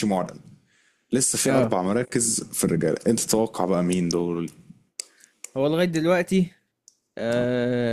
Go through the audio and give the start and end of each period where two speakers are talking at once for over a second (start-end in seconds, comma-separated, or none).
none